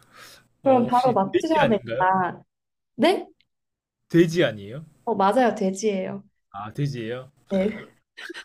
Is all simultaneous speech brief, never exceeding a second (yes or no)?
no